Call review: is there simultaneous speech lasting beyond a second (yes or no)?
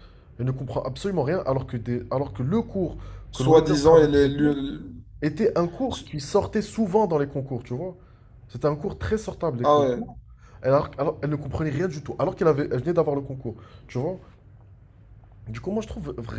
yes